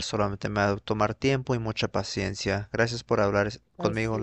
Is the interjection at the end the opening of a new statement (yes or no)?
yes